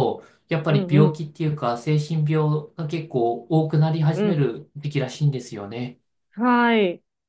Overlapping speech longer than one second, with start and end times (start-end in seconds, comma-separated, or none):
none